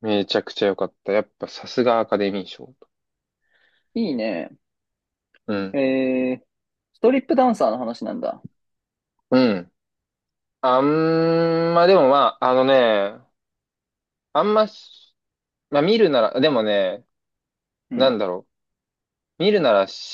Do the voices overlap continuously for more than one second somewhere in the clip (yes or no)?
no